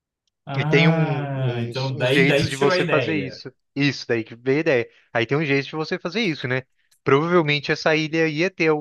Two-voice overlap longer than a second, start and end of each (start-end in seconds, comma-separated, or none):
0.6-3.4